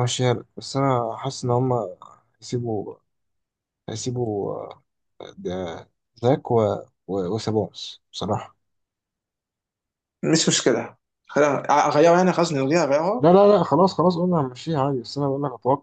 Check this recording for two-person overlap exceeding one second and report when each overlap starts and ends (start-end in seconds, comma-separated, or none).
none